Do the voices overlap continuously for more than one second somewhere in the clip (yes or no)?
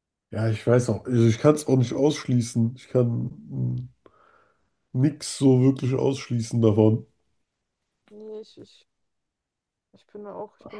no